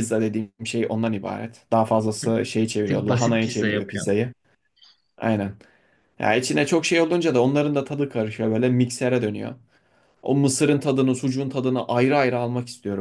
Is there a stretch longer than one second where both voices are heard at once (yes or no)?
yes